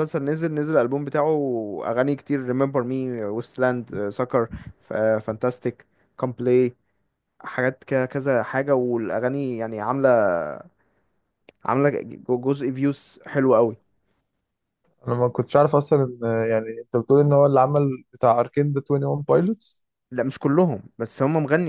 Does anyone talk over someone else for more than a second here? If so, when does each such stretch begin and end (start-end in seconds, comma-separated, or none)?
none